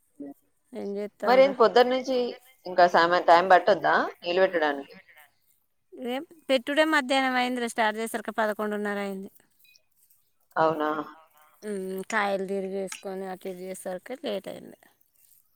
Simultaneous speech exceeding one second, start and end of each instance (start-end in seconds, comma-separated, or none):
none